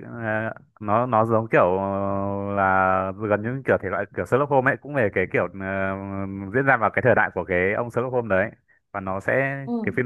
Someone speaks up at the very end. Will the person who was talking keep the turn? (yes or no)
yes